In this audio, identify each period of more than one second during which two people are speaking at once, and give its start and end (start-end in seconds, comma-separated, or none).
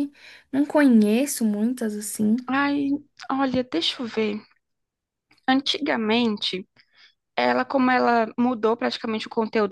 none